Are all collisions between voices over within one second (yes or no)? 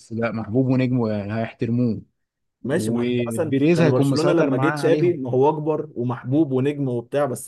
no